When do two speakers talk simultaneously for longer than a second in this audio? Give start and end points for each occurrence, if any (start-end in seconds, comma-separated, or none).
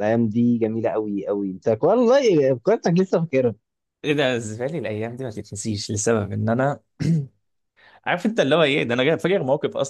none